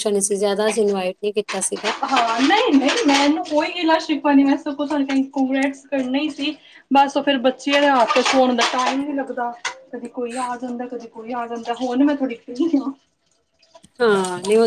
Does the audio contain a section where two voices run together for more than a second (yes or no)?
no